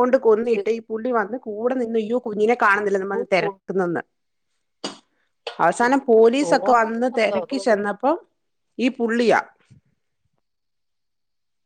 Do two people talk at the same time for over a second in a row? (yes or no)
yes